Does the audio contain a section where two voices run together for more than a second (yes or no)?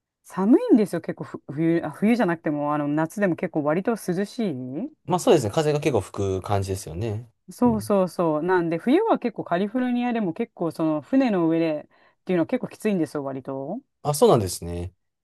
no